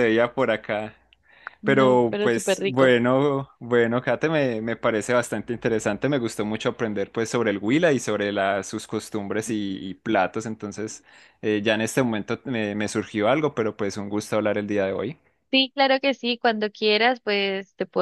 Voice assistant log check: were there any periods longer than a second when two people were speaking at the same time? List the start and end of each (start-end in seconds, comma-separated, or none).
1.6-3.0